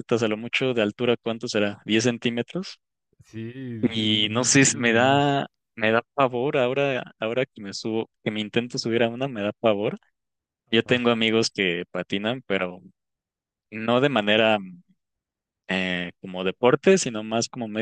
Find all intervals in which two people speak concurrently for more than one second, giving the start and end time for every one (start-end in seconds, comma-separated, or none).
4.0-5.4